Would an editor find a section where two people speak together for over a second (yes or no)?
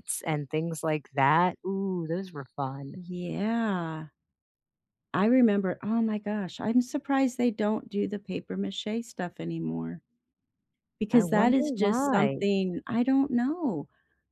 yes